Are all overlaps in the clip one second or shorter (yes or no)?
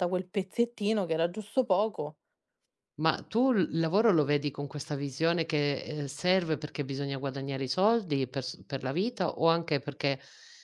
yes